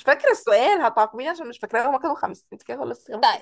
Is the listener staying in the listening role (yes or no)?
no